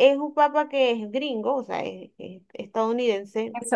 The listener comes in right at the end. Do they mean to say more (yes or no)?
yes